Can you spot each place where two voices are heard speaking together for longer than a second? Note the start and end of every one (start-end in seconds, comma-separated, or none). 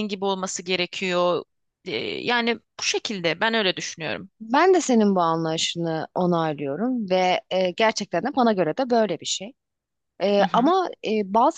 none